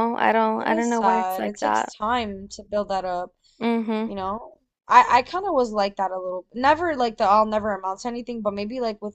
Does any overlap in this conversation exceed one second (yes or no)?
yes